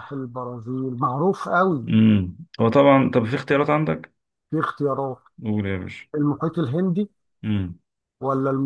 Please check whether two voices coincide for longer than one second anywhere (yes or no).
no